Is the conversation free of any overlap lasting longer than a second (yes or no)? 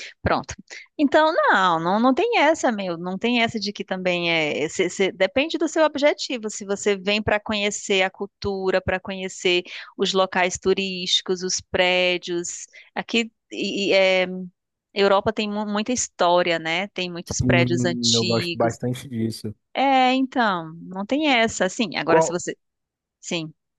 no